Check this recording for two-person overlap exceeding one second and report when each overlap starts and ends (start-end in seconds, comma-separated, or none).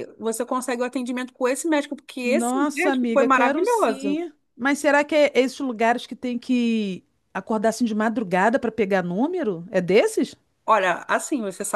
2.2-4.2